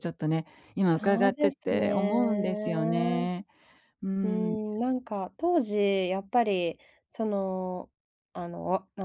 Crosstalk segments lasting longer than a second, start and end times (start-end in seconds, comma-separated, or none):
0.9-2.1